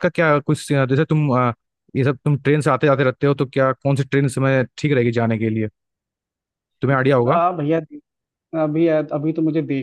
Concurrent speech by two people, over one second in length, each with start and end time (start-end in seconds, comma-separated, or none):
none